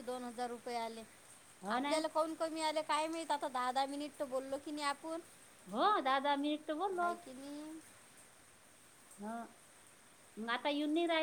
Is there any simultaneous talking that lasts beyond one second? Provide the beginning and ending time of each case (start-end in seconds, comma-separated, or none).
none